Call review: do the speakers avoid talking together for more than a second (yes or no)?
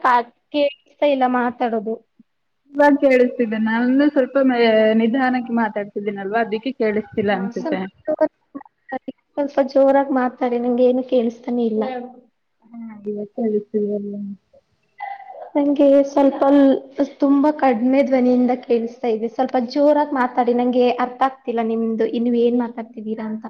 yes